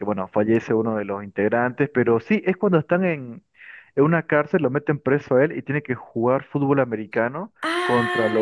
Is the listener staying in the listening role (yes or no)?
no